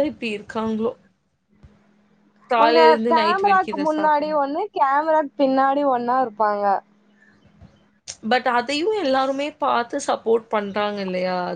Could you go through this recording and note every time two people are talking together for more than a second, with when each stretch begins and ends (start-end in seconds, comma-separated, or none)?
2.6-4.3